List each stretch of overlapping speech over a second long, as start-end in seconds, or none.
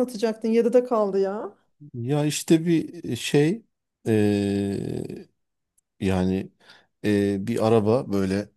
none